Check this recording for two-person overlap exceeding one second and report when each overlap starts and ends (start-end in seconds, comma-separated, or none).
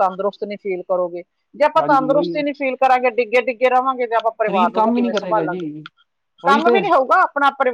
4.5-5.7